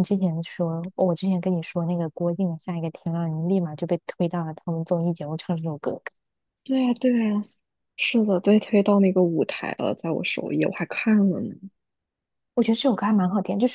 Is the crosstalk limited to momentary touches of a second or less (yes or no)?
yes